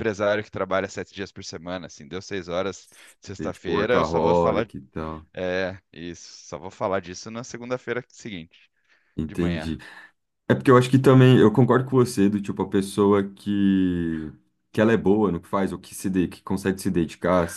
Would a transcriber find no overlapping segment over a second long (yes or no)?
no